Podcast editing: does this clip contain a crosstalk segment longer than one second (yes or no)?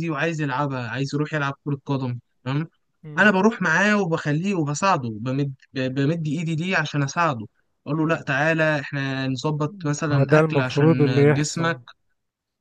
yes